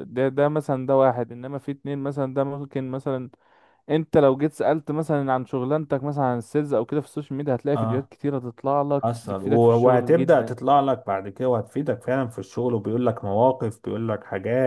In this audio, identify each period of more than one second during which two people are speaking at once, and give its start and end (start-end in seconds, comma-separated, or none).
9.0-10.5